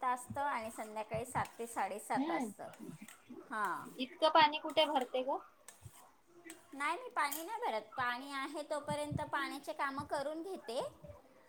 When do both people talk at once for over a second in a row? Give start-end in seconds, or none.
none